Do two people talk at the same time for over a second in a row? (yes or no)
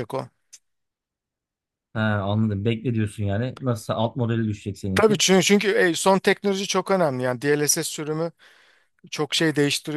no